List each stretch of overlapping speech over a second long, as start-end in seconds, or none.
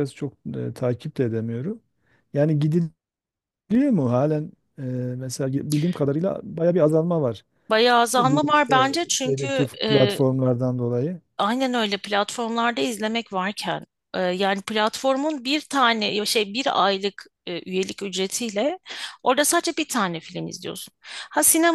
8.2-10.2